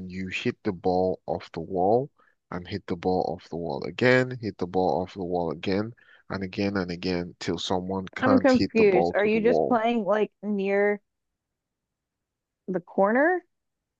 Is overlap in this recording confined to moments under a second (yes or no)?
no